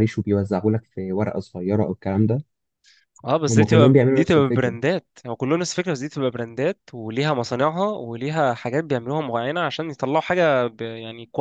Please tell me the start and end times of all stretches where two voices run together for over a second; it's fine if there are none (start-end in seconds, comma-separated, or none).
3.5-4.8